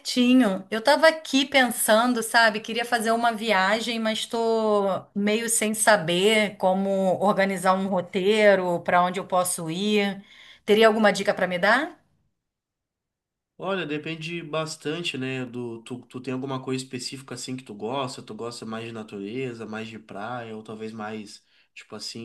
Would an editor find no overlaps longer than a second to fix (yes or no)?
yes